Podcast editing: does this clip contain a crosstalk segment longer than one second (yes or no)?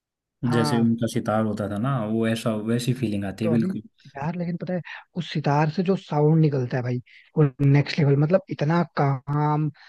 no